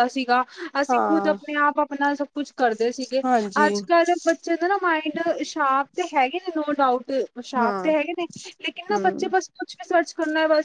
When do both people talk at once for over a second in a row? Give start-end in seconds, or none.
none